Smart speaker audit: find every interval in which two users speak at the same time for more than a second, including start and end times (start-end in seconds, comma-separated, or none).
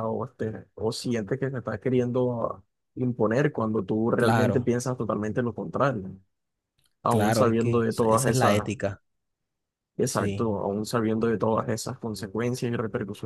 7.1-8.7